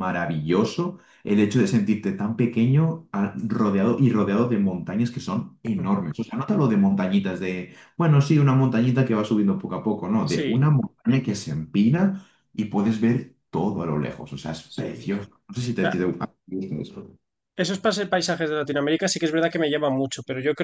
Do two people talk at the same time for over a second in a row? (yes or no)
no